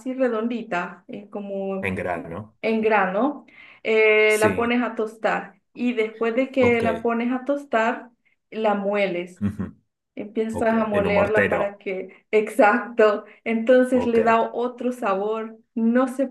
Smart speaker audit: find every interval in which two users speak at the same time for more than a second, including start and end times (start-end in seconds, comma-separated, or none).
10.5-11.8